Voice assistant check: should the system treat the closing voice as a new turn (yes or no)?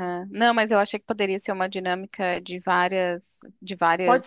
yes